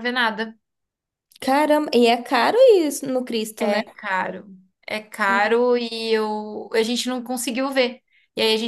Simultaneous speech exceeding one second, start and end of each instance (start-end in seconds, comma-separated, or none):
none